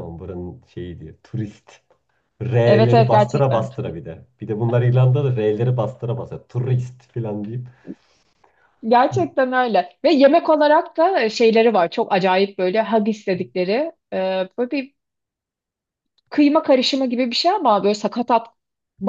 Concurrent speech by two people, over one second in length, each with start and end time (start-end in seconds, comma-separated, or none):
2.6-3.9